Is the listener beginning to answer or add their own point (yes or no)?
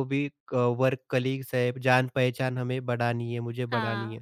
yes